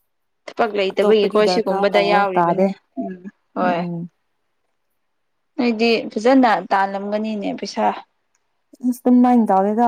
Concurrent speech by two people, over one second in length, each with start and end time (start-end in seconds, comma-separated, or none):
0.9-2.7